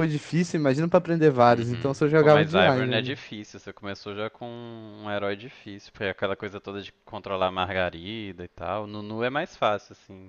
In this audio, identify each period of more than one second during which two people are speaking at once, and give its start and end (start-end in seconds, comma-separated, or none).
1.5-3.1